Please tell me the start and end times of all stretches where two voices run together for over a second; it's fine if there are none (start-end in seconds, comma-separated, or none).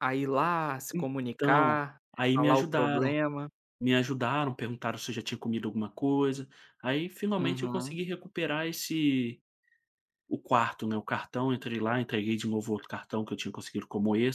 1.3-3.1